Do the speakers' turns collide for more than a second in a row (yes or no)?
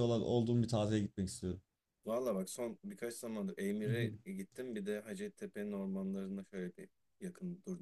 no